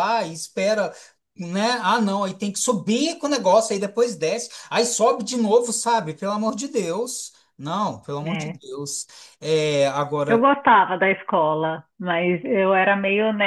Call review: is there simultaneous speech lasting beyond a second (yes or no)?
no